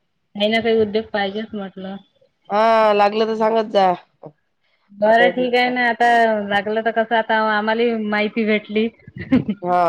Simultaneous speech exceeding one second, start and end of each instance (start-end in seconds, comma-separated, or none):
none